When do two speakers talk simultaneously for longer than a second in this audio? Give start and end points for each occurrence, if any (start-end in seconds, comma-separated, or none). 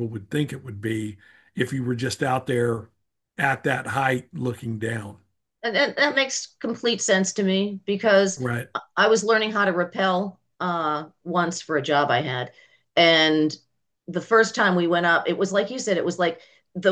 none